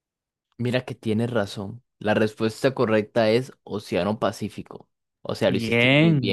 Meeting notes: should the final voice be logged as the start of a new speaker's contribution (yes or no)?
yes